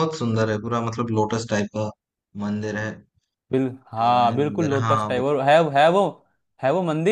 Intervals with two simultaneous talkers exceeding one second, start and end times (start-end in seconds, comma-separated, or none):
4.0-5.3